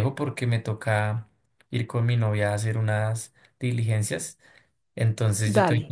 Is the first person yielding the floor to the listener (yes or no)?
no